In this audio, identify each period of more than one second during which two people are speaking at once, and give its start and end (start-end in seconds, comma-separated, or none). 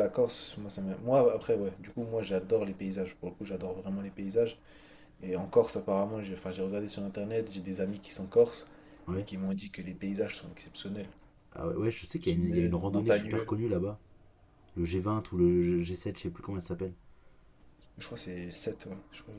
12.1-13.6